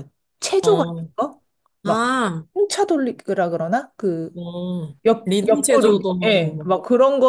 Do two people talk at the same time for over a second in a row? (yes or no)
yes